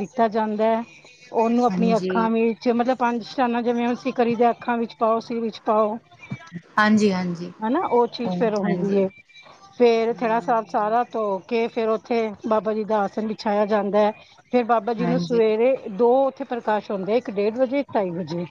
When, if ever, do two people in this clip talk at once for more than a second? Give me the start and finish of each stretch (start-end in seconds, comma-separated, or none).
none